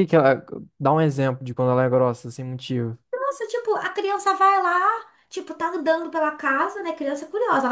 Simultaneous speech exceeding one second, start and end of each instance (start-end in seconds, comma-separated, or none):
none